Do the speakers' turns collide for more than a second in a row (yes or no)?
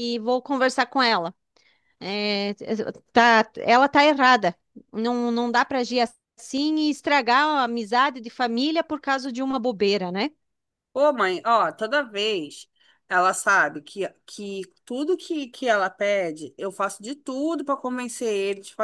no